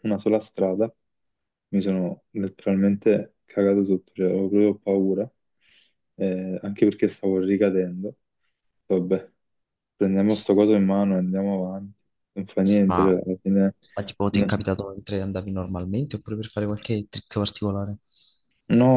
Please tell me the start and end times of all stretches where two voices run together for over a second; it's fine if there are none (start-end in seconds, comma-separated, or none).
none